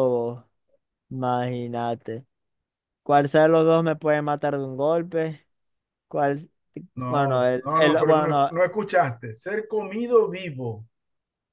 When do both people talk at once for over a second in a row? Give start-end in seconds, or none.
7.1-8.5